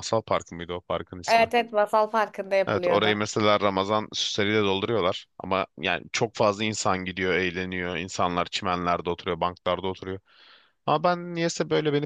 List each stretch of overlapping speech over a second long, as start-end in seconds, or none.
none